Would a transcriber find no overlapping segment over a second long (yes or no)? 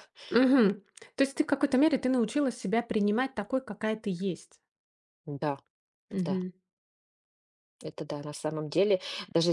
yes